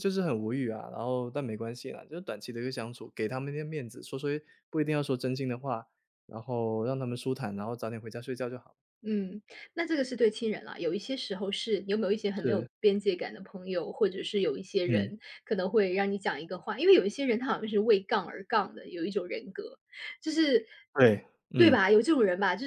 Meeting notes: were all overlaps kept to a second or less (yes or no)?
yes